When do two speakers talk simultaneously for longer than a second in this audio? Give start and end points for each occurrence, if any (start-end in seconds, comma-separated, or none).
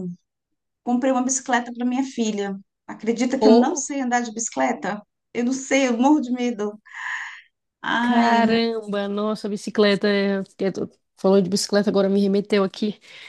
none